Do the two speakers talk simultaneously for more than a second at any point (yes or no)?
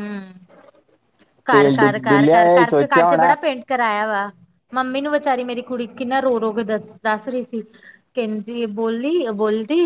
yes